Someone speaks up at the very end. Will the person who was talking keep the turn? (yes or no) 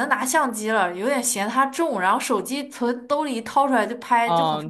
no